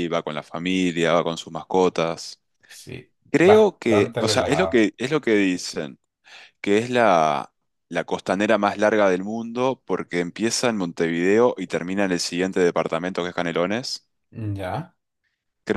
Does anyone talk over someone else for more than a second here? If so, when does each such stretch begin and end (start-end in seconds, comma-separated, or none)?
3.3-4.9